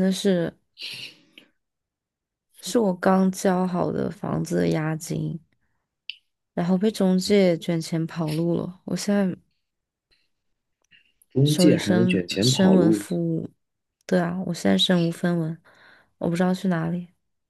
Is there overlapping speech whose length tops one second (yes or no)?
yes